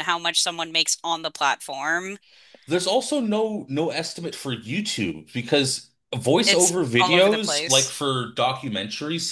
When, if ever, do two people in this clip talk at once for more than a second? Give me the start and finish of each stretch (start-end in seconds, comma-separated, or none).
6.5-8.0